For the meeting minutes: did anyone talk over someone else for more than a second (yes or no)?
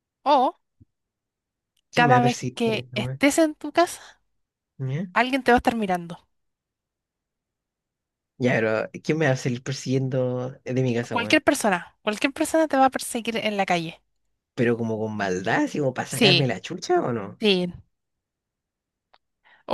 yes